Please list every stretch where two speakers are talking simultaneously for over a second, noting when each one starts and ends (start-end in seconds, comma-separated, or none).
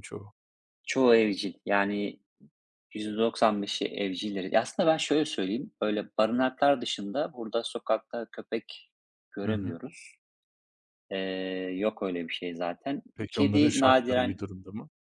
13.2-14.4